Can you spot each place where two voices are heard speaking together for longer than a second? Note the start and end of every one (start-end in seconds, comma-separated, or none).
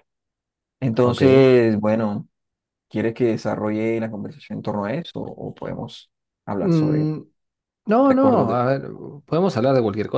none